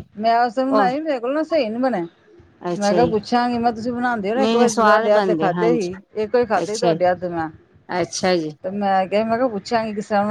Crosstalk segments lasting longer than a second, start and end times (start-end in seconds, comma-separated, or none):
4.4-5.9